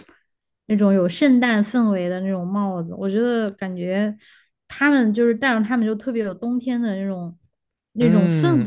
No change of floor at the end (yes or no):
no